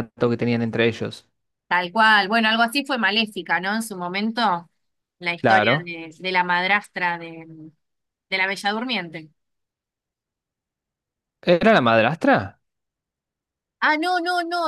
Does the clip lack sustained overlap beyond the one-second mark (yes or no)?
yes